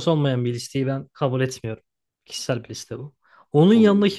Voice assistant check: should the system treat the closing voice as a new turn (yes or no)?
no